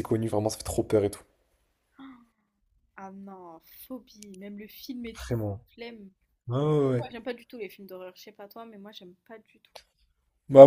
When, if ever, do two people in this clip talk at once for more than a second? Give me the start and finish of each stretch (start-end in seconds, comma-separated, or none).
none